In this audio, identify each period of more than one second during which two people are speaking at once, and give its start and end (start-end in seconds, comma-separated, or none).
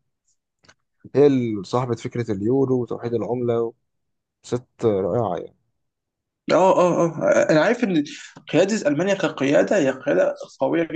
none